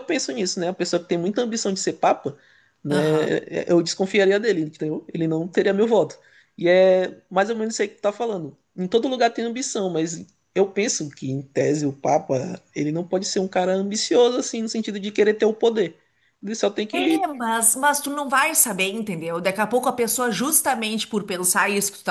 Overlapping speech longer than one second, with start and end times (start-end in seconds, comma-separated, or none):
none